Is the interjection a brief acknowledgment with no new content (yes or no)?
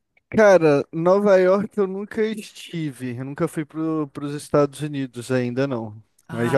yes